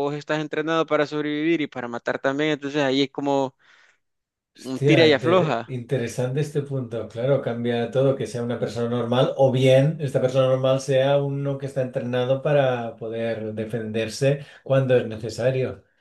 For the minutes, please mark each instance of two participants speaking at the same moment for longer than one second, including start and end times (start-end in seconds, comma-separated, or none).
4.6-5.8